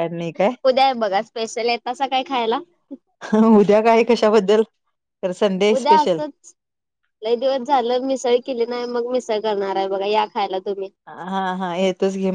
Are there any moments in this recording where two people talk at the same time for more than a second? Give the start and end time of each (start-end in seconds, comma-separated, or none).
none